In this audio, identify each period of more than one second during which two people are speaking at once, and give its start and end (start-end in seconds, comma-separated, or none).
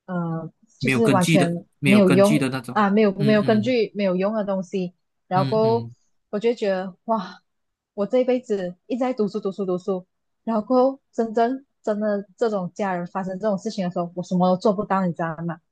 0.8-3.7